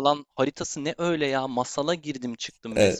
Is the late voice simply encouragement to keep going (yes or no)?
no